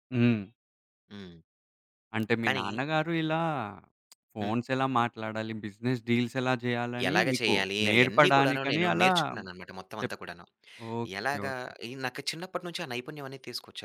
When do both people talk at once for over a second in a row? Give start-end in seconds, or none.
7.1-9.1